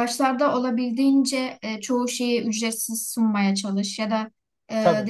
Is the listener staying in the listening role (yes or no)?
yes